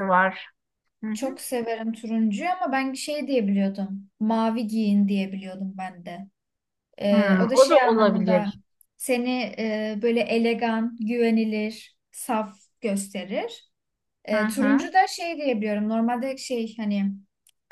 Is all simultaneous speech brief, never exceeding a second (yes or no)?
no